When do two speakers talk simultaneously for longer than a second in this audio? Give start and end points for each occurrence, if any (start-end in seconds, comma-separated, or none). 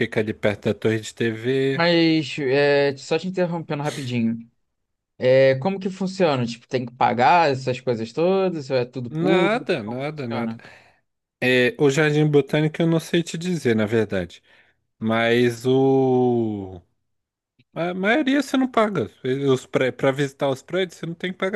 9.1-10.6